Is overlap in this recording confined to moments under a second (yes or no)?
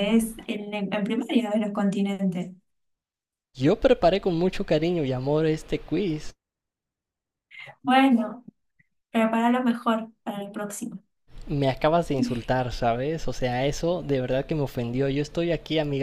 yes